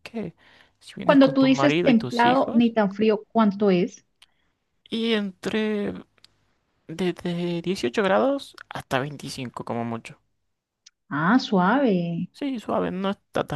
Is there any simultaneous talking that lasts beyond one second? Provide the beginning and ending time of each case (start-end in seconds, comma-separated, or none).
1.0-2.7